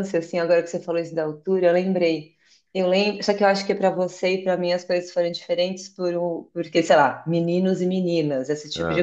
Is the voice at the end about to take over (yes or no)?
no